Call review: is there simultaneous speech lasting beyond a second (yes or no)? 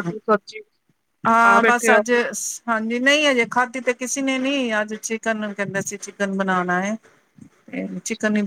no